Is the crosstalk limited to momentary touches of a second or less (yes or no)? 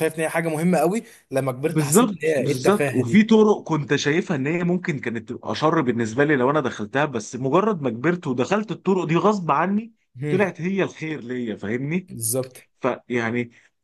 no